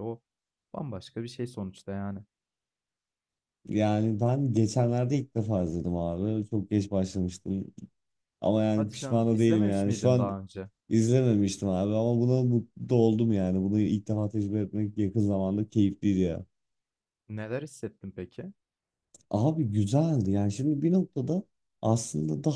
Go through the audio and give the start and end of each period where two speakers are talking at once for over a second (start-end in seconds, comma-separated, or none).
8.8-10.4